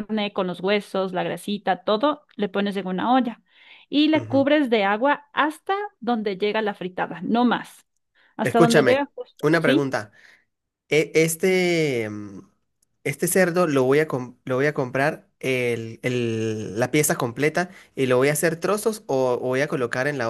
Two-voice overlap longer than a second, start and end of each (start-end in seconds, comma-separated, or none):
8.4-9.9